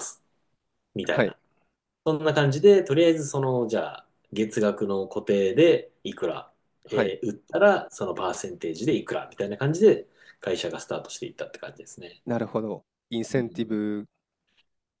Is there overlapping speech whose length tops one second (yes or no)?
no